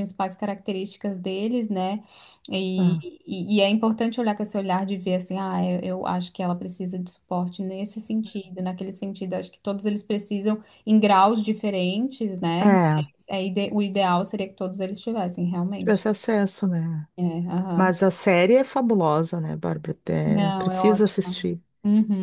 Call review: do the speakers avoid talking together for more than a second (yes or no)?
no